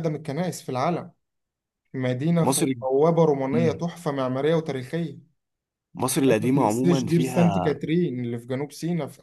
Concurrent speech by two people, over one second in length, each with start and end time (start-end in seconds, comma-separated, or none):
6.1-7.8